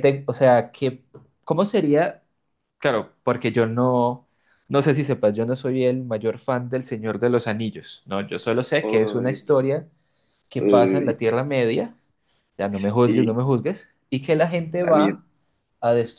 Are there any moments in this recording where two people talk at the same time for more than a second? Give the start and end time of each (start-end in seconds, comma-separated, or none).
none